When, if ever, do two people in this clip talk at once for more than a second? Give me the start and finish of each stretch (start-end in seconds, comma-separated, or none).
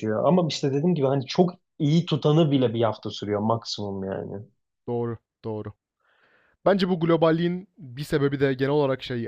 none